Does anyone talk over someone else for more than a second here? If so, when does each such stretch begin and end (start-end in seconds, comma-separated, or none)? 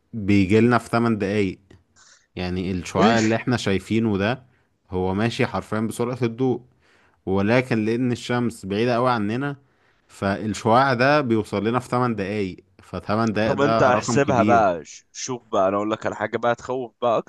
13.4-14.7